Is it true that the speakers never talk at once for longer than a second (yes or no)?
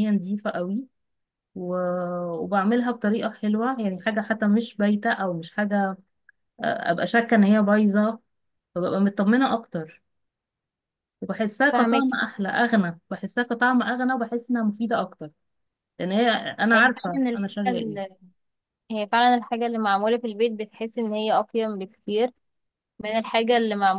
no